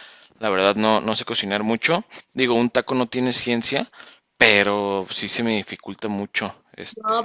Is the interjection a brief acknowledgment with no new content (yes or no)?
no